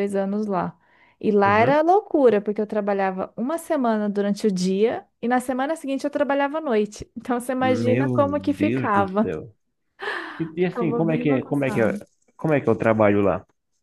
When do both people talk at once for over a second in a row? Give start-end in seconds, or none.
7.6-9.3, 10.6-11.9